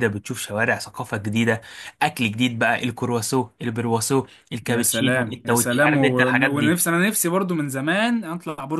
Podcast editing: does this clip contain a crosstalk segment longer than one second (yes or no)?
yes